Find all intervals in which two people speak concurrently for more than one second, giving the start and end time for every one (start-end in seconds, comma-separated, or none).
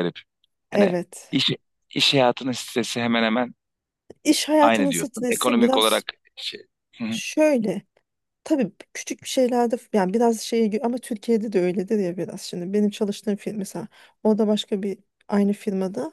4.6-6.0